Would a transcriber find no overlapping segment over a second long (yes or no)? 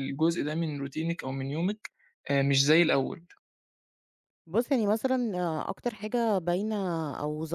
yes